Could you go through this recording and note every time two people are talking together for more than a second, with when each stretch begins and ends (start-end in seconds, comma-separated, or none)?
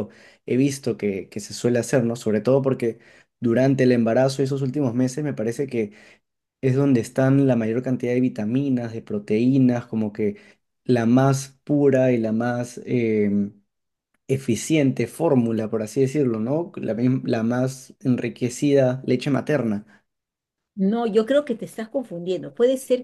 none